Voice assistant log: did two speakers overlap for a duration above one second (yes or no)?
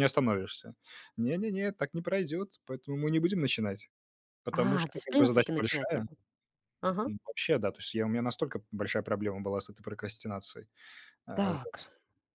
yes